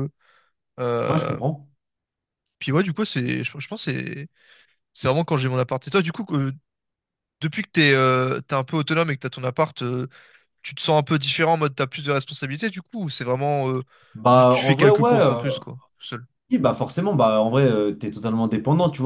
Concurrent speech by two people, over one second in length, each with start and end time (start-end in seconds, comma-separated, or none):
14.3-15.6